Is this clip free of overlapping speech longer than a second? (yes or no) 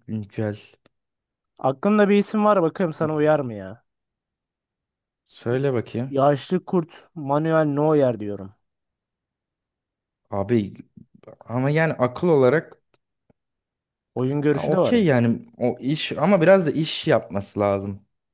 yes